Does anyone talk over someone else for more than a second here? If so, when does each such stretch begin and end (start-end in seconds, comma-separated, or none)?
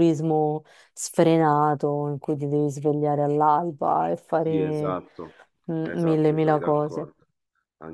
5.8-7.1